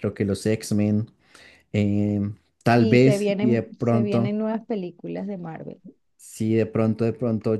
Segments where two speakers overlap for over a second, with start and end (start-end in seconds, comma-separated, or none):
2.8-4.3